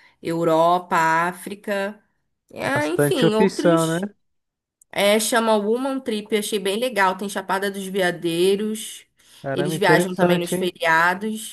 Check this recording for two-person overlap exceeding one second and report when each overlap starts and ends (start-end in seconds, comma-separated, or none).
2.6-4.0, 9.5-10.7